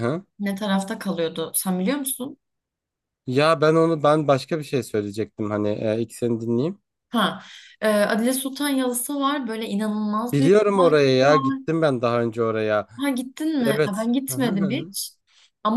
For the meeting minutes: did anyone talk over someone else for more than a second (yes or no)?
yes